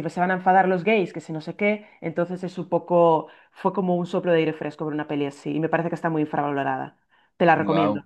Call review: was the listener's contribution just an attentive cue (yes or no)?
no